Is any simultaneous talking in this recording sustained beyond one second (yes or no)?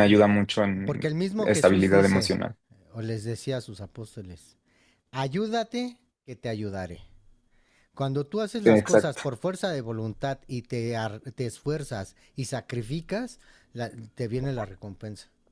yes